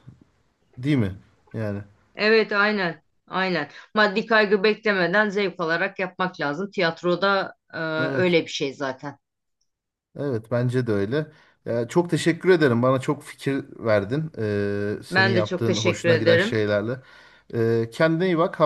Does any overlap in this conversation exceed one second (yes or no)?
yes